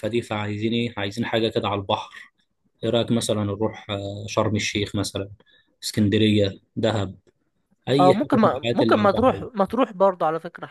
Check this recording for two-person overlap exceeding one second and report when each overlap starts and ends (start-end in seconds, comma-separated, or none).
8.0-9.5